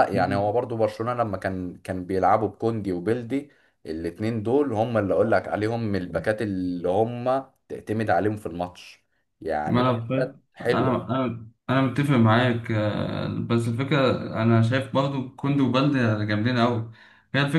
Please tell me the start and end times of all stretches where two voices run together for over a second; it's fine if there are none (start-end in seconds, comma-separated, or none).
9.7-11.0